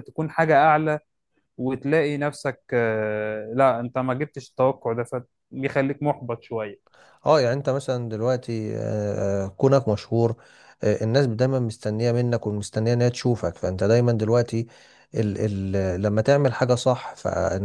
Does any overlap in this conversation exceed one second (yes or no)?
no